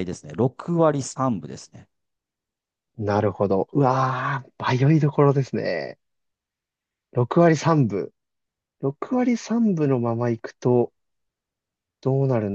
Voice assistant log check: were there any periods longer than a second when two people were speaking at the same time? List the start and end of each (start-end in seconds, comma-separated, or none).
none